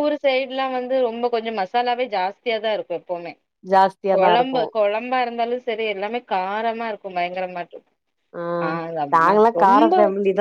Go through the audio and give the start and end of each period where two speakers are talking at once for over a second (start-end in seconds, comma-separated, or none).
none